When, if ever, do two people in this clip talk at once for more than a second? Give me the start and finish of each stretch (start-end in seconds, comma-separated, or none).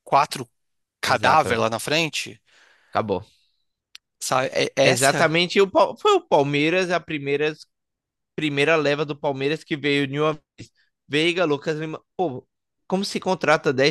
none